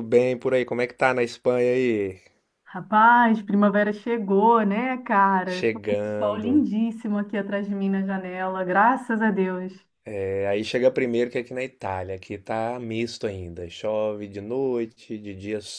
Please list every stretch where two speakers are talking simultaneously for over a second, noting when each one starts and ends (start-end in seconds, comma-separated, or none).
5.4-6.7